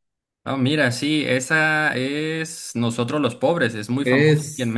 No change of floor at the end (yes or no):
no